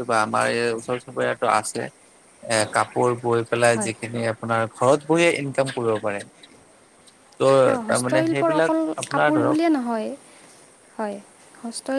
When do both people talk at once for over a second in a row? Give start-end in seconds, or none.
7.6-9.6